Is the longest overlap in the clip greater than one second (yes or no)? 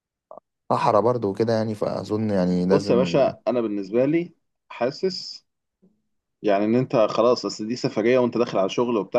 no